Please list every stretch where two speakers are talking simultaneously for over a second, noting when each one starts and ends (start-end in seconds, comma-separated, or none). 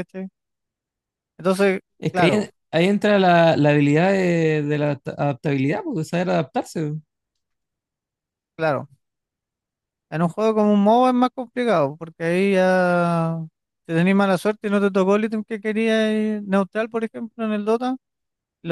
none